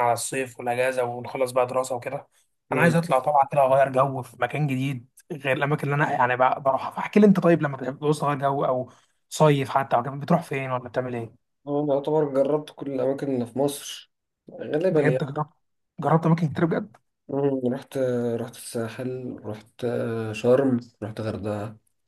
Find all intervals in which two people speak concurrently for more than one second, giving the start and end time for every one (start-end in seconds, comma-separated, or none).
none